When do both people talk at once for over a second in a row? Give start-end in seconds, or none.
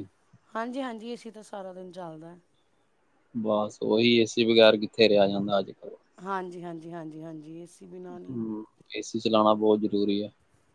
none